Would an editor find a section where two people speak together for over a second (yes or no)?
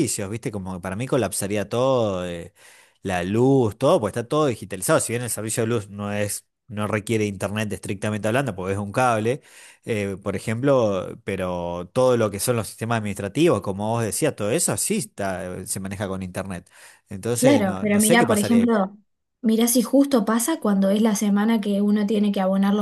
yes